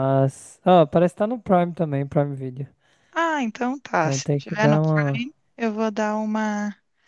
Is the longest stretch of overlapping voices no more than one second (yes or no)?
no